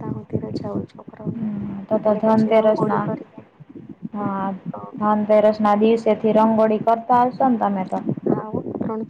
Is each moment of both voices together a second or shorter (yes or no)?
no